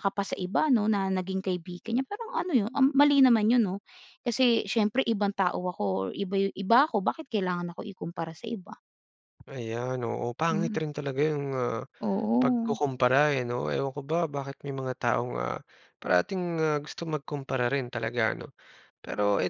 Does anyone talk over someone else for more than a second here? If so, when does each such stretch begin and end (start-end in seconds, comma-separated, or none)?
none